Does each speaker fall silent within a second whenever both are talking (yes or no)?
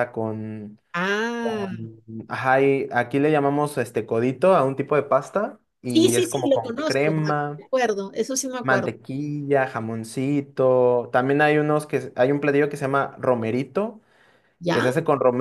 no